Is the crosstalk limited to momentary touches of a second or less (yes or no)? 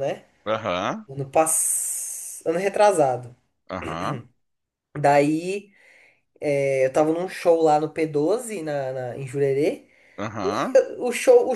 yes